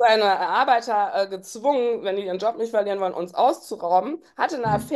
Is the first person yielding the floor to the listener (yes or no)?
no